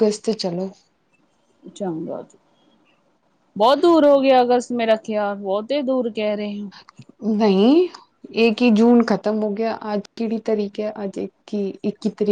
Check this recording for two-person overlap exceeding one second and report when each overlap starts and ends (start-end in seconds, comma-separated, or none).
none